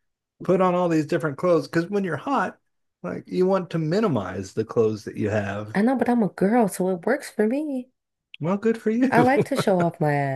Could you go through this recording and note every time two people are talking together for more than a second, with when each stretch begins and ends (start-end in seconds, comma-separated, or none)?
none